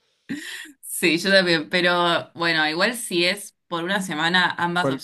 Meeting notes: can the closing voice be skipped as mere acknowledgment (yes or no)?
yes